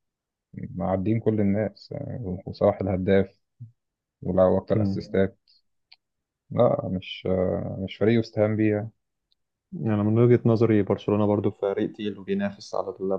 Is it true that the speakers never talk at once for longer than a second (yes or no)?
yes